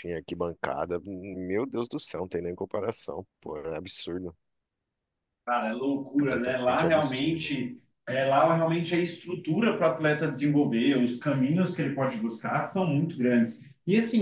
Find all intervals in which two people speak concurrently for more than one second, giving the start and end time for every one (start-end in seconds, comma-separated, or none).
6.2-7.5